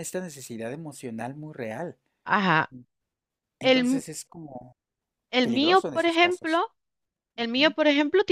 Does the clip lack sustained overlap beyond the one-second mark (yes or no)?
no